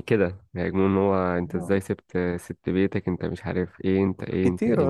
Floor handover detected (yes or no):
yes